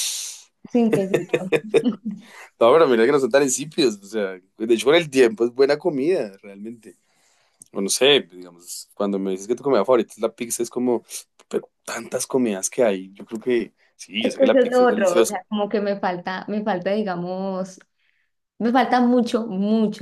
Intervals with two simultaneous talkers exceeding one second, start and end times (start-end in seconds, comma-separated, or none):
14.2-15.4